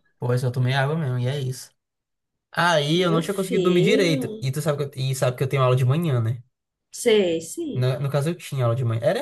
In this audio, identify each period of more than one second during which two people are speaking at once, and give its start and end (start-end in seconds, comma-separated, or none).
3.0-4.5